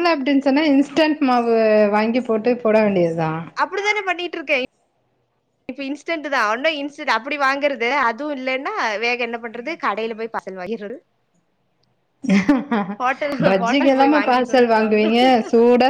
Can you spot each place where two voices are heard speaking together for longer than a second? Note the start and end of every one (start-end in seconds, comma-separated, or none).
13.5-15.3